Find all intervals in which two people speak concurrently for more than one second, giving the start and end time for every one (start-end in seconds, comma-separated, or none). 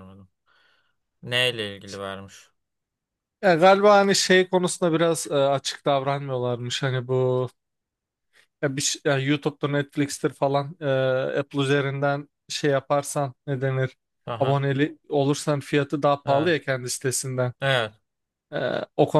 none